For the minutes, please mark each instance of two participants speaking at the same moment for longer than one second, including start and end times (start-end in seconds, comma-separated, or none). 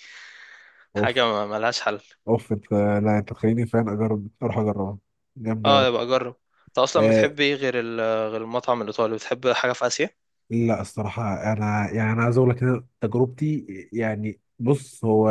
none